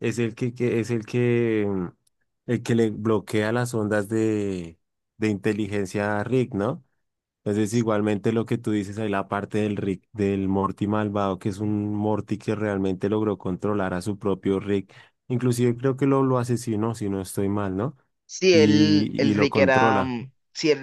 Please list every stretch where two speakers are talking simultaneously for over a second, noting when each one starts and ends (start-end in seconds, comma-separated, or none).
18.5-20.1